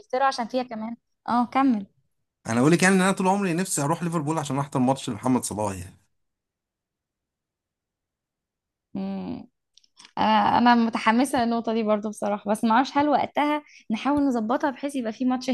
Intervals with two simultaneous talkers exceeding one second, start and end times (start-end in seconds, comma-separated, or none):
none